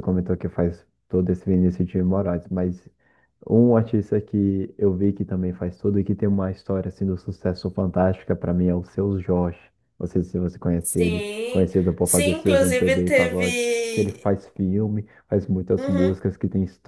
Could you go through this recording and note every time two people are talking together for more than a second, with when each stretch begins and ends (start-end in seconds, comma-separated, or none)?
10.8-14.3